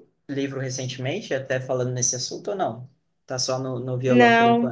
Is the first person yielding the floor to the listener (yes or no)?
yes